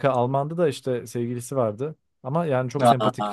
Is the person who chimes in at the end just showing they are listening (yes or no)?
yes